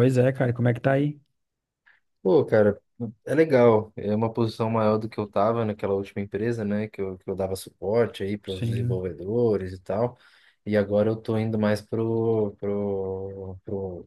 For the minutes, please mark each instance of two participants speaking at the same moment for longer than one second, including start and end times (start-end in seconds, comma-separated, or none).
none